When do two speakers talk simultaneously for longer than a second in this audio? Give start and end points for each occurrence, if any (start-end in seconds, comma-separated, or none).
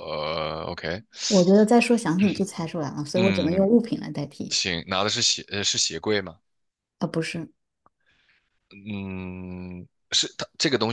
none